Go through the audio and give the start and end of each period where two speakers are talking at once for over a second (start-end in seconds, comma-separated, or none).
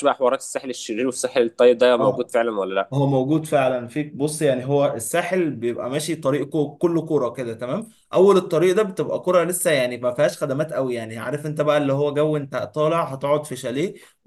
none